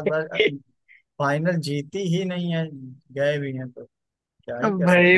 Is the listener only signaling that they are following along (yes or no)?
no